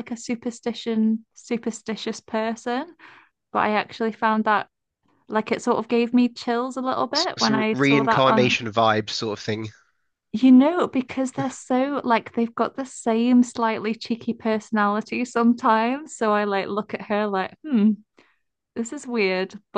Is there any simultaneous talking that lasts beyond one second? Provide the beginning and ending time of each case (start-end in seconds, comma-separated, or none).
7.2-8.6